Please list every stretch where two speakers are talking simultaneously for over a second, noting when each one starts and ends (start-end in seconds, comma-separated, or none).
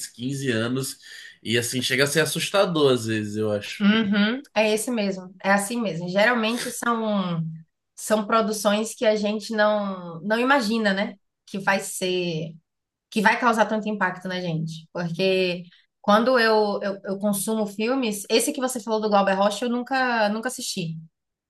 none